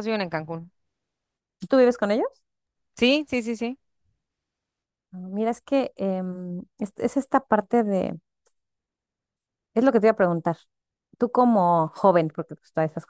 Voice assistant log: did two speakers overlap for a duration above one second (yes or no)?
no